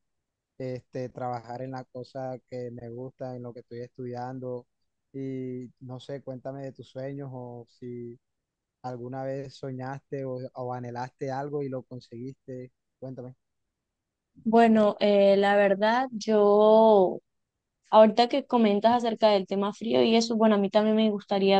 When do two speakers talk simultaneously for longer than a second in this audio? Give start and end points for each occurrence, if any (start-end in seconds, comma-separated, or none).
none